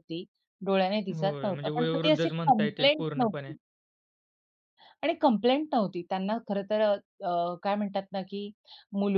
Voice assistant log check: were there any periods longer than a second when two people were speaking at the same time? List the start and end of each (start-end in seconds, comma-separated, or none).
1.1-3.5